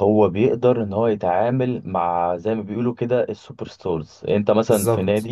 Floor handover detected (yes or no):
no